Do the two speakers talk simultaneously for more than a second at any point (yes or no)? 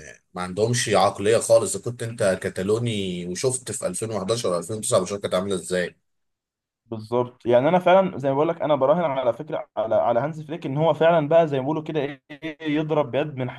no